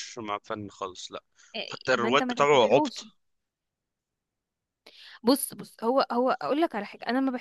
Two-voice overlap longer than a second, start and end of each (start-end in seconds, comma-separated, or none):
1.7-3.0